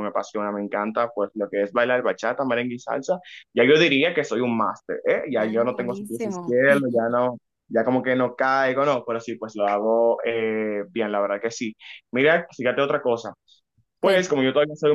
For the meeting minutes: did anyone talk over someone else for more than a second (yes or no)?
yes